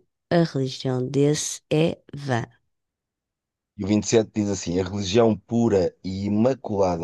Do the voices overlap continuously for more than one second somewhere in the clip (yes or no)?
no